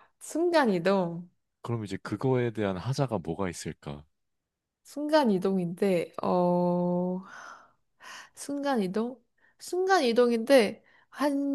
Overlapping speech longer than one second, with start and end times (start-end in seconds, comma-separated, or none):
none